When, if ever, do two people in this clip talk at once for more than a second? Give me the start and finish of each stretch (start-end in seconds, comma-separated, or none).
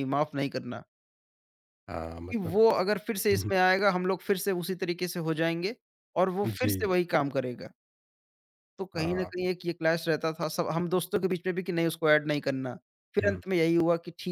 none